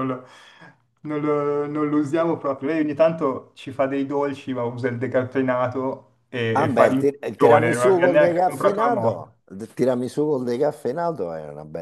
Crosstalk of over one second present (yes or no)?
yes